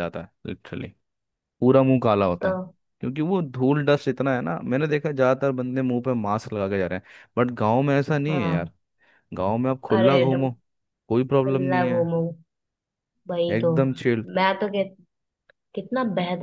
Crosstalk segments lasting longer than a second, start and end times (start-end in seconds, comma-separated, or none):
none